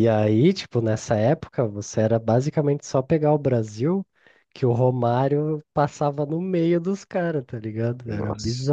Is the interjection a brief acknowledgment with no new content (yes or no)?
yes